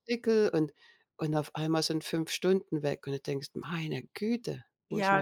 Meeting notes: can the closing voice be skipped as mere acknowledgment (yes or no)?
no